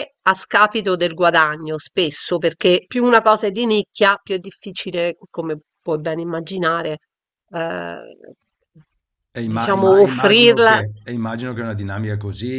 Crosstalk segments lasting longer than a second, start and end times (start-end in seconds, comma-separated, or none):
9.5-10.8